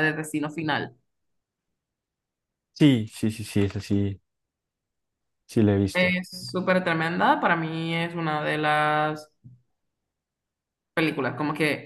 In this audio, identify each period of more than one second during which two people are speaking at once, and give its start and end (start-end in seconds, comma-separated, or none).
none